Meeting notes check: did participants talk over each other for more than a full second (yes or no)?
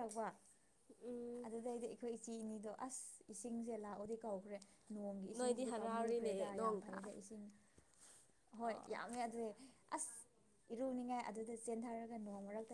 yes